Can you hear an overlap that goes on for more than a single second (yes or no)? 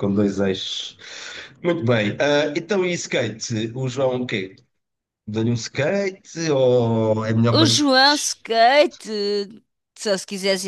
no